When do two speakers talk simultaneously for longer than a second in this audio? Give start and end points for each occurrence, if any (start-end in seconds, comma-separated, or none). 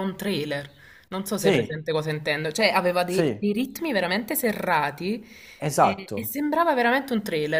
none